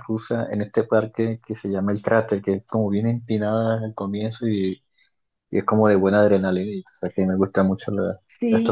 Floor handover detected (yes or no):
yes